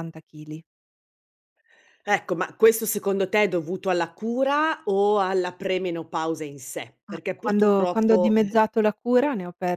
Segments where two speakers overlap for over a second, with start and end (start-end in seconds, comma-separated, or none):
7.1-8.6